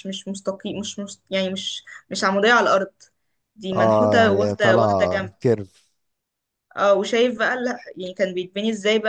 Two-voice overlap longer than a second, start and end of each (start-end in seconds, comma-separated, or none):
3.8-5.3